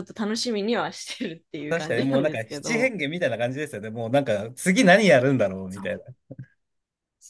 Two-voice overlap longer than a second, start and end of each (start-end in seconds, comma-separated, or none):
1.7-2.9